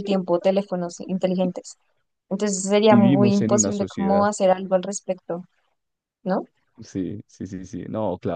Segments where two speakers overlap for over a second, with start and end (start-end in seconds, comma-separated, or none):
2.9-4.3